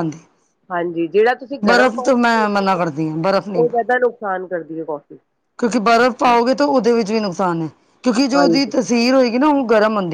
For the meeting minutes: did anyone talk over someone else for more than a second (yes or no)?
yes